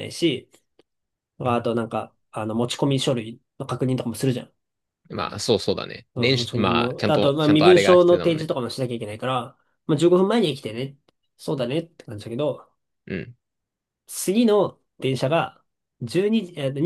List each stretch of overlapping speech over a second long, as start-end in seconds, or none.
6.2-8.5